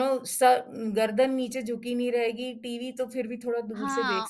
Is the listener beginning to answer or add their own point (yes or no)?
yes